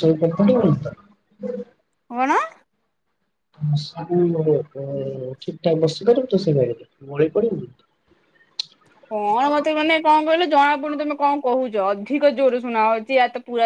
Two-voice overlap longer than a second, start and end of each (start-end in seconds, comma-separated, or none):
none